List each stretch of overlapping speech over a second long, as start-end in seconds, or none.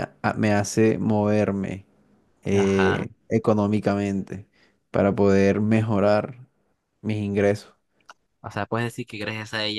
none